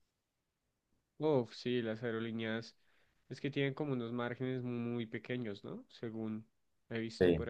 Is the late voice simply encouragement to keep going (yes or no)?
no